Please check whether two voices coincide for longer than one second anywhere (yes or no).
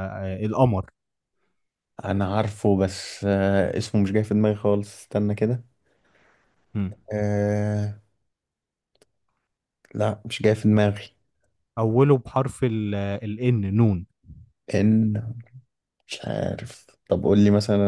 no